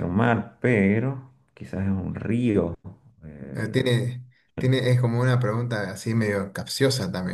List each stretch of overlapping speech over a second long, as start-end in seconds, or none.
none